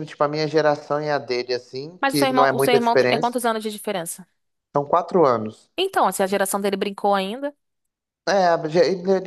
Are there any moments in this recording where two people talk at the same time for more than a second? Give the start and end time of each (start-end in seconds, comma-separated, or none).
2.0-3.4